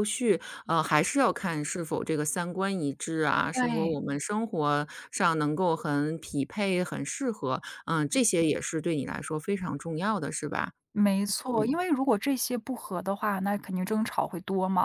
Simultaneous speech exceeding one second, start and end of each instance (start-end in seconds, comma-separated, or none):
none